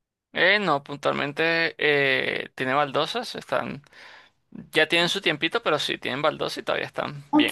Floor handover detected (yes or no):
yes